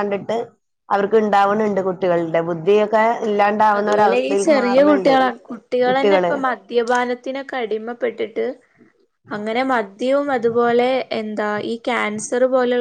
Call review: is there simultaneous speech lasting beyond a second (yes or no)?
no